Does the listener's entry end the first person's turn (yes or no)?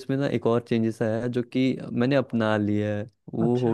no